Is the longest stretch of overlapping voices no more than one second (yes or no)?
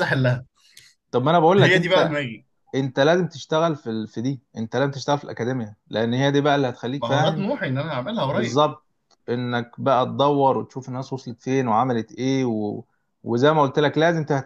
yes